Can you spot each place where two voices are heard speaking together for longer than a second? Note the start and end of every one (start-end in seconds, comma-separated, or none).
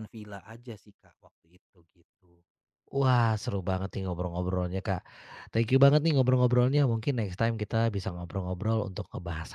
none